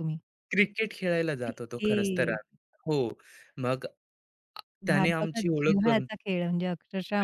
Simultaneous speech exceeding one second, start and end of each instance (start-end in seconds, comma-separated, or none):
4.9-6.1